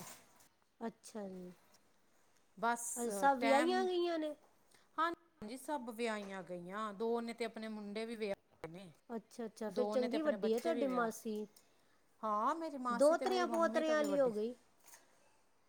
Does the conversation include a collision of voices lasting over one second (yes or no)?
yes